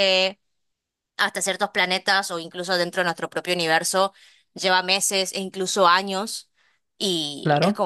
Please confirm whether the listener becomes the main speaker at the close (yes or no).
no